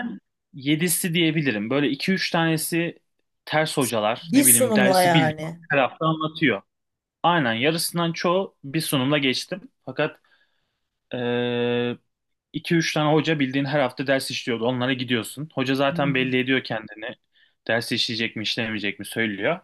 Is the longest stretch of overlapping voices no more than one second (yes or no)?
no